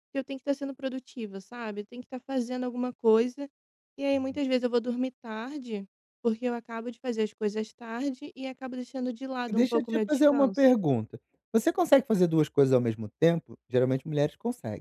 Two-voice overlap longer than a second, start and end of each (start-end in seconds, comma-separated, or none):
9.5-10.7